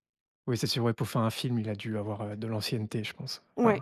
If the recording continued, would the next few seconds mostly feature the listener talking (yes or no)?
yes